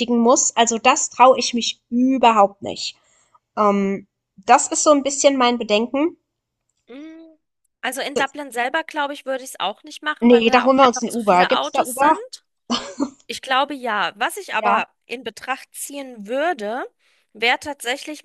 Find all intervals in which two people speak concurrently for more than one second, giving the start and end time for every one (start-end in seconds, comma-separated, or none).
10.2-12.2